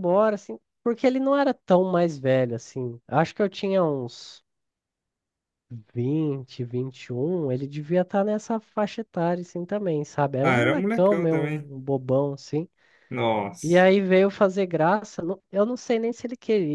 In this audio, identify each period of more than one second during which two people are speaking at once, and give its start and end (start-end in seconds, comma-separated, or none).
10.4-11.7